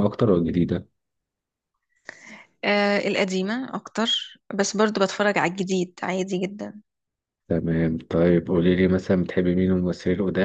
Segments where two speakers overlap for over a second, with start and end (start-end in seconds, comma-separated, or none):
none